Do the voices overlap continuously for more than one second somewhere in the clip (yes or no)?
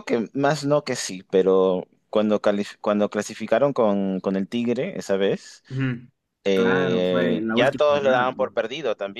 yes